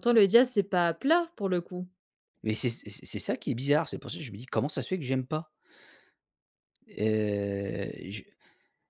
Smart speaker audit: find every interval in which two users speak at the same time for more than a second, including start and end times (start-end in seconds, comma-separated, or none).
none